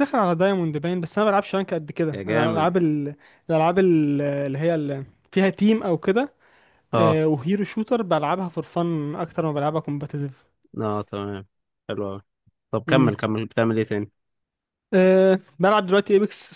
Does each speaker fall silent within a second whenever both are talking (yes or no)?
yes